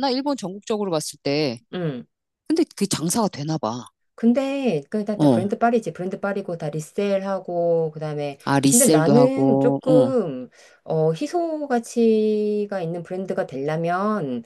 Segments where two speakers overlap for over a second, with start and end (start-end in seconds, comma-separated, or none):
8.4-10.1